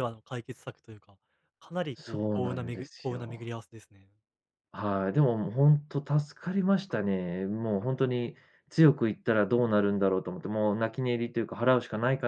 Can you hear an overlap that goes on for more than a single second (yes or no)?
yes